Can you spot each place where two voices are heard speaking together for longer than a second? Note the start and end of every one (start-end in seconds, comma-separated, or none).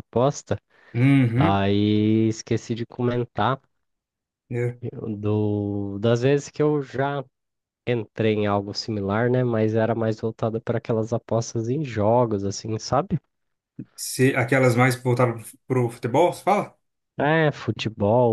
none